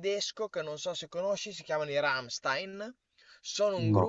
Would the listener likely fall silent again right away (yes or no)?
yes